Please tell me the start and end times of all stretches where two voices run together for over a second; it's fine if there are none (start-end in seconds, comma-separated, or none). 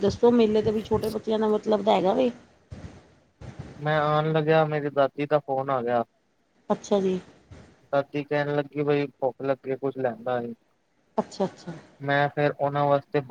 none